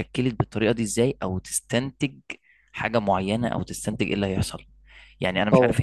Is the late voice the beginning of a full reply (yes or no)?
no